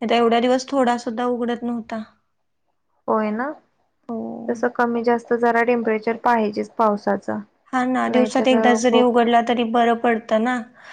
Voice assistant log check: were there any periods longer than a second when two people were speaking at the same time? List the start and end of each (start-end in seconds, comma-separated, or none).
none